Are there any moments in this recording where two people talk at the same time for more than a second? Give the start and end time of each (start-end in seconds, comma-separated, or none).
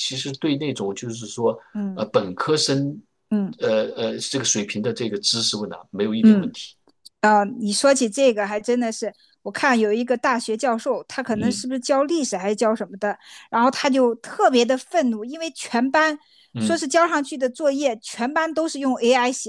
none